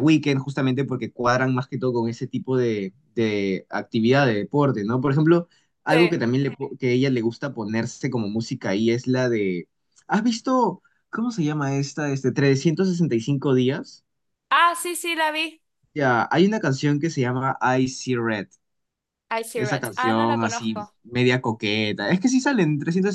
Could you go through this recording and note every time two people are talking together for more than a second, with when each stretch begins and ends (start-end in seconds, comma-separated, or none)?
19.6-20.9